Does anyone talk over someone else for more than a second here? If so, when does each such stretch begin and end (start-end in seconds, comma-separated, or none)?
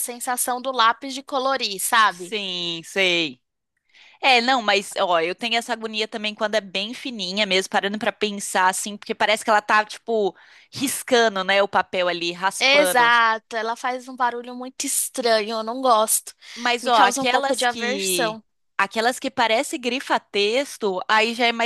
16.8-18.4